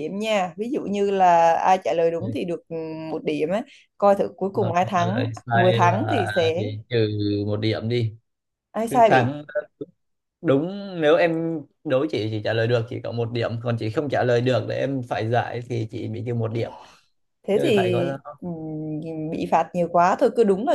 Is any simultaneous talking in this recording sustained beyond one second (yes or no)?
yes